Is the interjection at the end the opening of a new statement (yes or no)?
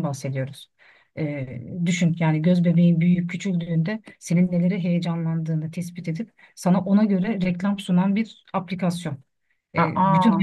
no